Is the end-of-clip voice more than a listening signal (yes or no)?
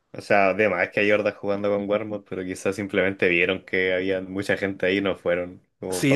yes